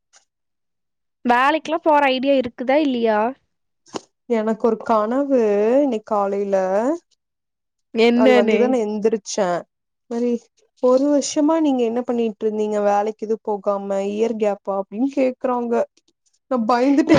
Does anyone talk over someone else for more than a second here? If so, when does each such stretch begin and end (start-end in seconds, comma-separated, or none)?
none